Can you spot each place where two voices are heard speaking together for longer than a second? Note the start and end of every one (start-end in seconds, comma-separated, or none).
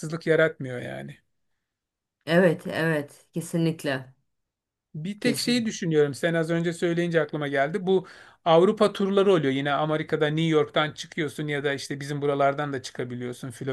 none